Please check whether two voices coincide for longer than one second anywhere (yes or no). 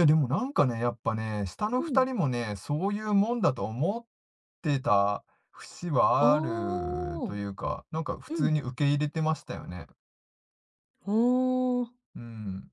yes